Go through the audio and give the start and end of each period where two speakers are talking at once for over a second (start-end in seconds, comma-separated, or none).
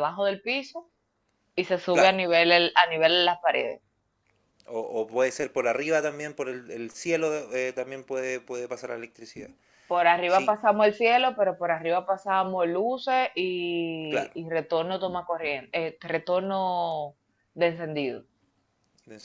none